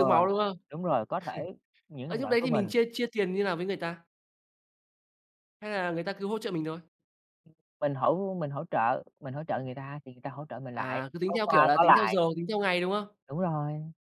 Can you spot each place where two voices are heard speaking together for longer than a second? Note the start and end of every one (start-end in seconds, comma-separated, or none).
10.7-12.2